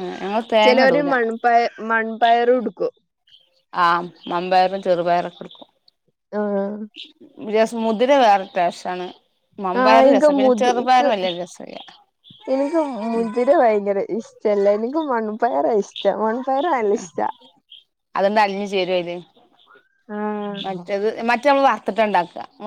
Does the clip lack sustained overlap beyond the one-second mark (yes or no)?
yes